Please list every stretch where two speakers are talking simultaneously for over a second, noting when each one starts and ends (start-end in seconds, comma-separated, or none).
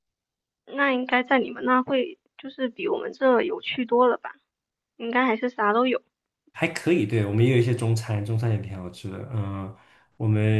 none